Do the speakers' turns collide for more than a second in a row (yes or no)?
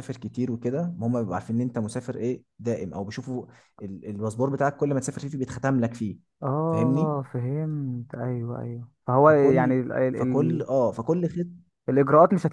yes